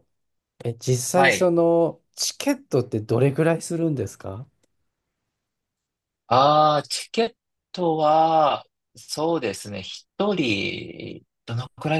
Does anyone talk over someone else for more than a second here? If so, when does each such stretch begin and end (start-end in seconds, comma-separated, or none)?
none